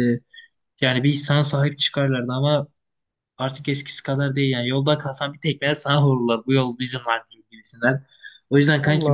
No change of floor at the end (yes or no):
yes